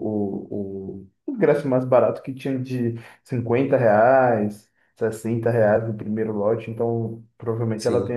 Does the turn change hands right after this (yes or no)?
yes